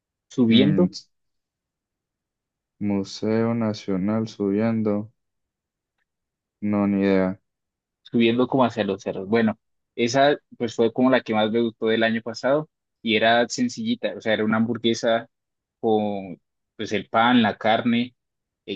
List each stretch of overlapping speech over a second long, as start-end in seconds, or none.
none